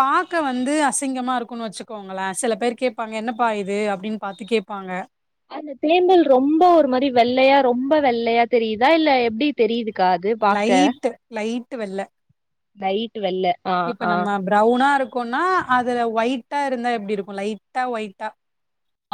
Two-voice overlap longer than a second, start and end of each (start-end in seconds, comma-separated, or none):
none